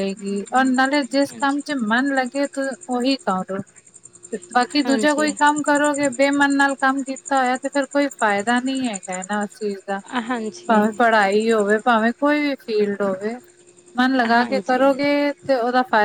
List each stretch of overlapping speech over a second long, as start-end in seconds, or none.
none